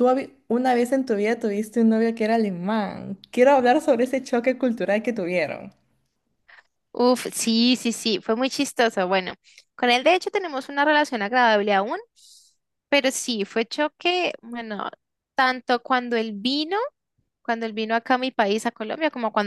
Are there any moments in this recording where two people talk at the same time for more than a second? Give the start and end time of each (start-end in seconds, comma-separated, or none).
none